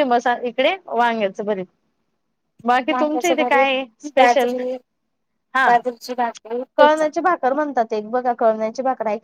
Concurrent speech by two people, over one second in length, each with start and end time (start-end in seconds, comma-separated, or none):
2.9-4.5